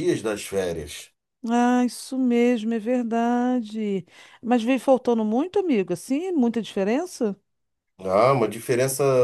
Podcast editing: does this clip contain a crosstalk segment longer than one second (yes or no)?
no